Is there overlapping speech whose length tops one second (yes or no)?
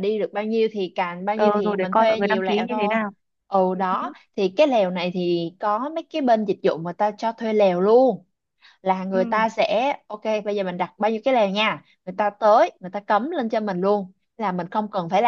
yes